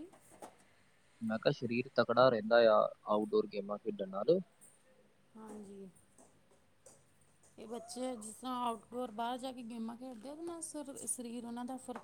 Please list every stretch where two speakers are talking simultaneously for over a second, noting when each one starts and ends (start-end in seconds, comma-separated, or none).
none